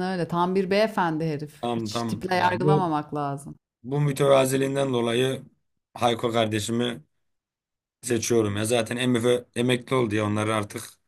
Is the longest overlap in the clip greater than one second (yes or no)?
yes